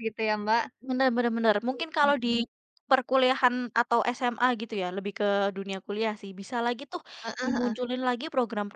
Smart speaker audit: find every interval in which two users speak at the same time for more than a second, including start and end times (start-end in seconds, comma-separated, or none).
none